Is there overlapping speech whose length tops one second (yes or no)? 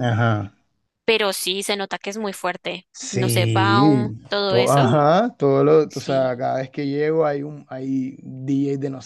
yes